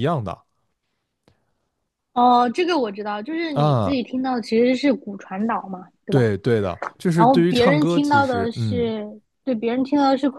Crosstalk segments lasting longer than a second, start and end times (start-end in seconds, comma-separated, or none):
7.1-8.9